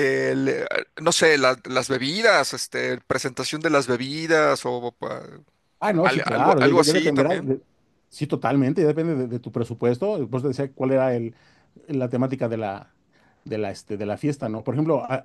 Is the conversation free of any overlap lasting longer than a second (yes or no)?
no